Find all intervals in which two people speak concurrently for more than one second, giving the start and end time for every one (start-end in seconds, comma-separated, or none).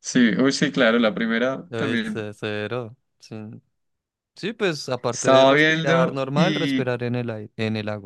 5.1-6.9